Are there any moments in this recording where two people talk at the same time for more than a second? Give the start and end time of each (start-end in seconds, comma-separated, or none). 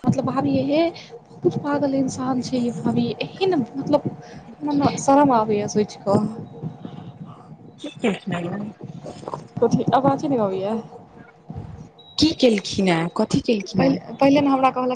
none